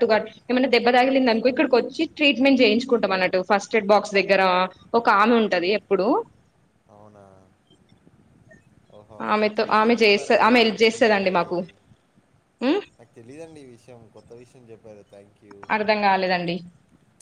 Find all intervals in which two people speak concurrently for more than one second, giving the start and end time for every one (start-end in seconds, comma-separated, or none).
9.3-11.5